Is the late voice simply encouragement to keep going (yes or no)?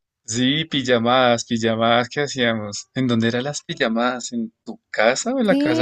no